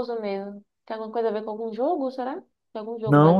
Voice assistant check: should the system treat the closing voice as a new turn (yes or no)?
yes